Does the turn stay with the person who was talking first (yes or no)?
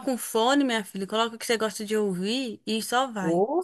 no